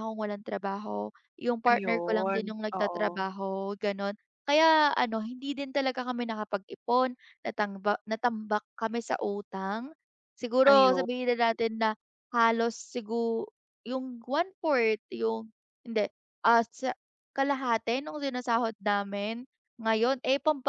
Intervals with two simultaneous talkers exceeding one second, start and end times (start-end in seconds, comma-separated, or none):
1.7-3.2